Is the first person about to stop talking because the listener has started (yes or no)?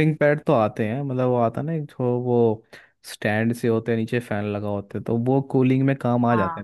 no